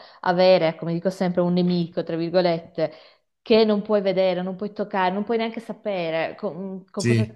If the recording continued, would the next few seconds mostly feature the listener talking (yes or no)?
no